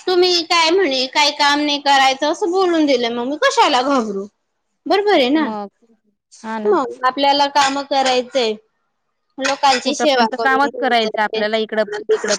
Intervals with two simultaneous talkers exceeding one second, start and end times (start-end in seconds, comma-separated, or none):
9.8-11.4